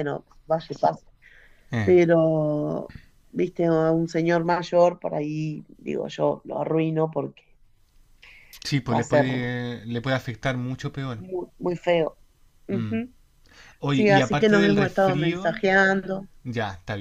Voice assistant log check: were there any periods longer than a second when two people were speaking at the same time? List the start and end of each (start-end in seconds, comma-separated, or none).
13.9-15.6